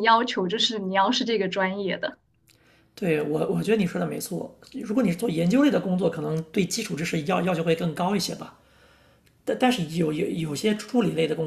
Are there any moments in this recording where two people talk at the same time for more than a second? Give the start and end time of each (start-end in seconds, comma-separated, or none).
none